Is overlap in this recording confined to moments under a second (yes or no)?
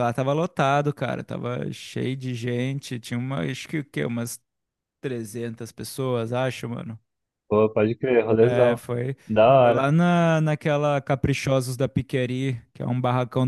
yes